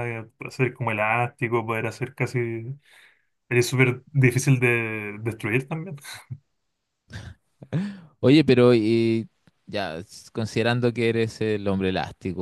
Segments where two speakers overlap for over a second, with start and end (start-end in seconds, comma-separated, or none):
none